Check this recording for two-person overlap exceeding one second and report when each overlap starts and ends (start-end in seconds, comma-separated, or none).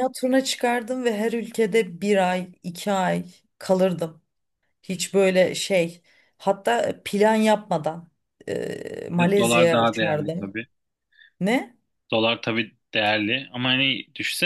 9.1-10.6